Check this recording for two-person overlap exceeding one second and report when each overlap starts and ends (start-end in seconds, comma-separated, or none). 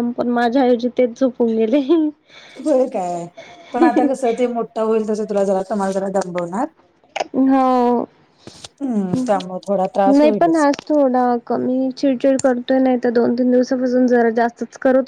none